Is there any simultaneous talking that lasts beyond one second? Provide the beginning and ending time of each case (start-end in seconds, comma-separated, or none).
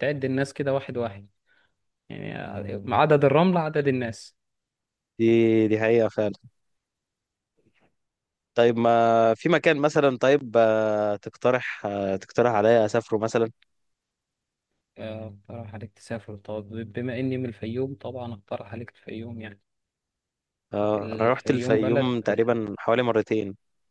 20.9-22.2